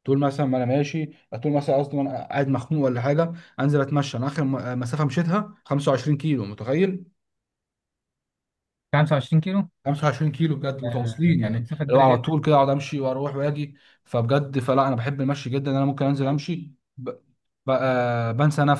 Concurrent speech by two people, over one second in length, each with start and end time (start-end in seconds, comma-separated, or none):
10.8-12.3